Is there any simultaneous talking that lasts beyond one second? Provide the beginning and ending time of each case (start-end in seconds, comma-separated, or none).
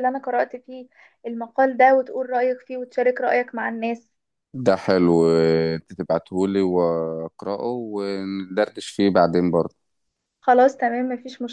none